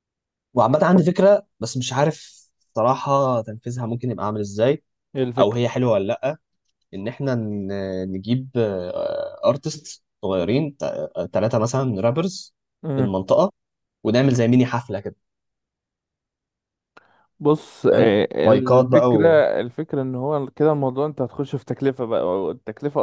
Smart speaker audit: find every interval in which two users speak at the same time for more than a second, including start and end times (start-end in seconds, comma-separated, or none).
17.9-19.4